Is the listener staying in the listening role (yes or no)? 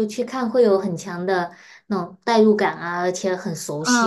no